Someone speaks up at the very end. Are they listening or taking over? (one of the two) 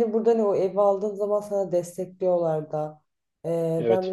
listening